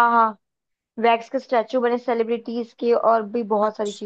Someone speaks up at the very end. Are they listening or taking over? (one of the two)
taking over